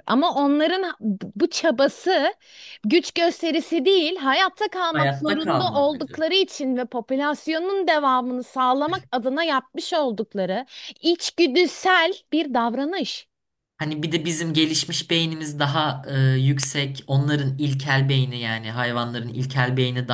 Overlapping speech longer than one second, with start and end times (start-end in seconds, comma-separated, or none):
4.9-6.2